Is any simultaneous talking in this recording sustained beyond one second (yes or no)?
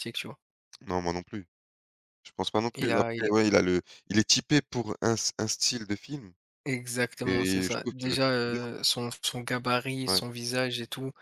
yes